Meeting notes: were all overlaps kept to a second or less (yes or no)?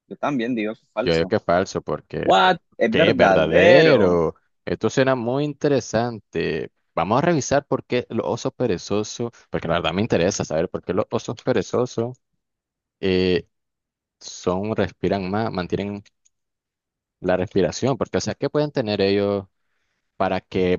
no